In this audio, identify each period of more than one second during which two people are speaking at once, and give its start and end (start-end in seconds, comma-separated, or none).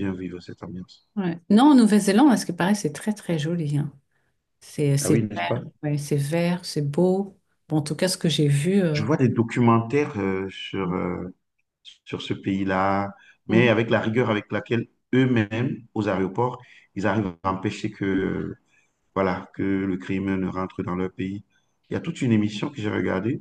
none